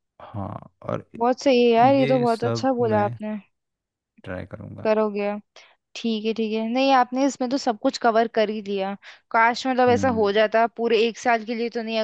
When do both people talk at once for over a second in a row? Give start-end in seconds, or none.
1.8-3.2